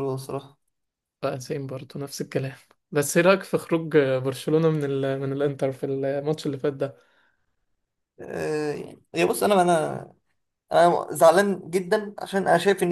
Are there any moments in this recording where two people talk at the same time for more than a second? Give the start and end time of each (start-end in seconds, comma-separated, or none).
none